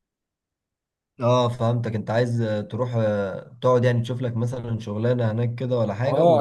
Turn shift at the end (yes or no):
yes